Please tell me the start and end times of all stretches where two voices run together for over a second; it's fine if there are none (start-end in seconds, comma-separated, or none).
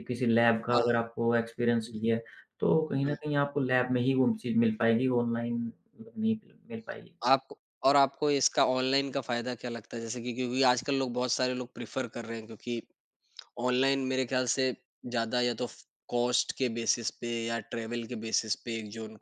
none